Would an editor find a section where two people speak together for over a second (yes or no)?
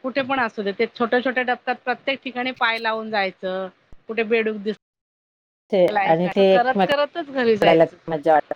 yes